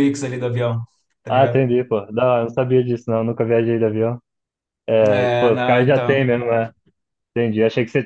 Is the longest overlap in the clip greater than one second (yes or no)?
yes